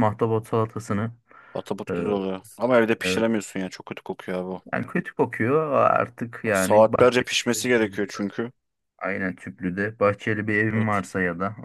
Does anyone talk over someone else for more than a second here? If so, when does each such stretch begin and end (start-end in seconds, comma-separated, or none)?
6.5-8.0